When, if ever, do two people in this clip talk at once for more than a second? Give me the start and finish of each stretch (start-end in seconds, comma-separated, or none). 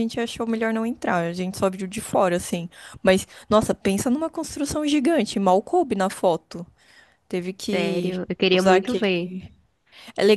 7.7-9.3